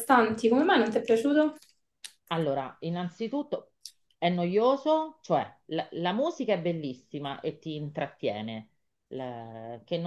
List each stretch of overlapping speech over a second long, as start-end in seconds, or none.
none